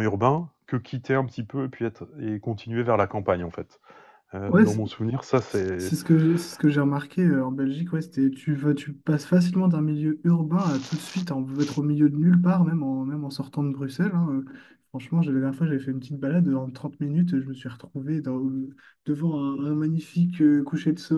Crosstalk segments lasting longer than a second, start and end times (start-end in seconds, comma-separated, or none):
none